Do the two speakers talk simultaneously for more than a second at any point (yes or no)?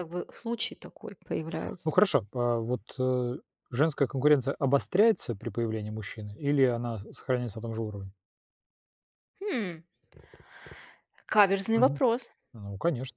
no